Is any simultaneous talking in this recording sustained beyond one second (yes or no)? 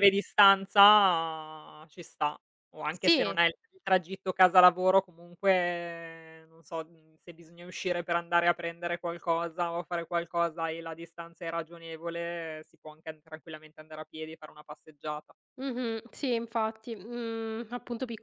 no